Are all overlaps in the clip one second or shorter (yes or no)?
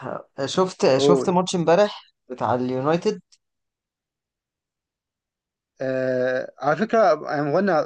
yes